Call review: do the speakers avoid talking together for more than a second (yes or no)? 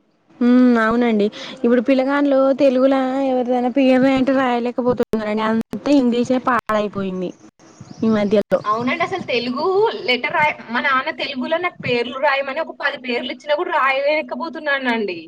yes